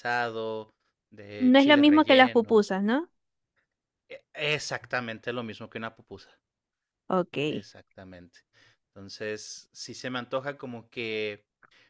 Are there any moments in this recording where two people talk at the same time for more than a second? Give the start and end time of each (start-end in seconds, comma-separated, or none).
1.4-2.6